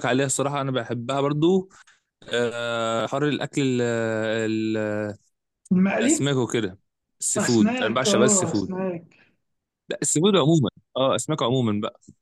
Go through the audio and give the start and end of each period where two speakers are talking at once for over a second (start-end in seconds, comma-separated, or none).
7.4-8.7